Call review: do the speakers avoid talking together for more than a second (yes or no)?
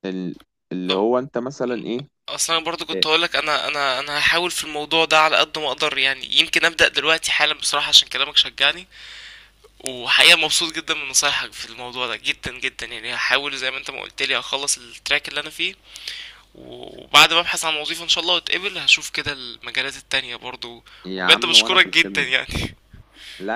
no